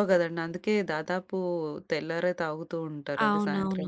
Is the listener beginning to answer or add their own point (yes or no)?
yes